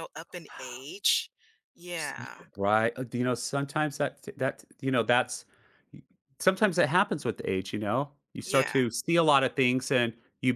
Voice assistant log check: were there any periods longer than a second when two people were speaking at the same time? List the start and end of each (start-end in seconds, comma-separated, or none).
none